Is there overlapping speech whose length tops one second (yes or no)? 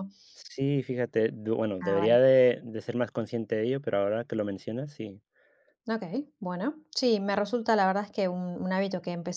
no